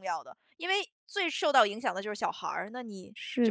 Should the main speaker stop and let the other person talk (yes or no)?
yes